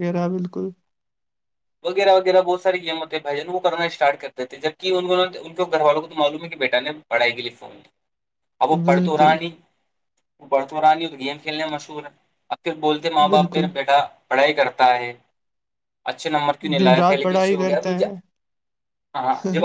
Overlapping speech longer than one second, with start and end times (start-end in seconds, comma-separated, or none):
16.8-18.1